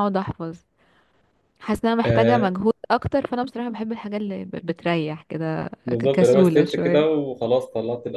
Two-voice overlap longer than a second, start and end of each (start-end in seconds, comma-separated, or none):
5.8-7.1